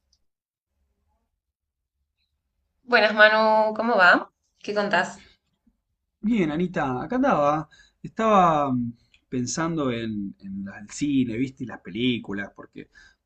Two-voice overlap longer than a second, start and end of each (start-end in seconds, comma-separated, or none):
none